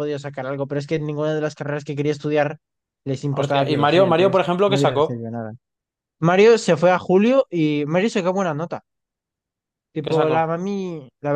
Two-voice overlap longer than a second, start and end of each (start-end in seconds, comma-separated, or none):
3.3-5.3